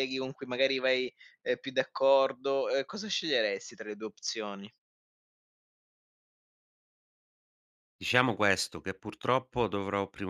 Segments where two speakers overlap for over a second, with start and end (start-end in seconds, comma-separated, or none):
none